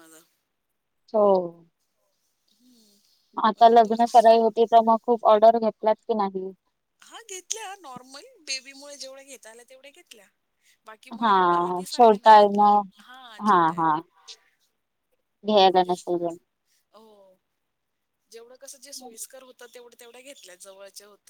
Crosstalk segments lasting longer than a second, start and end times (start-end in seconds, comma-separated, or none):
11.2-12.6